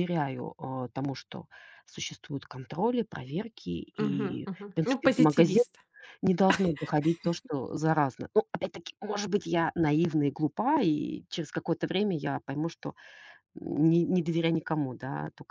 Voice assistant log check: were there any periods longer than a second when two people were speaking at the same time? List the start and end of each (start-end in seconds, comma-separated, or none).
4.0-5.7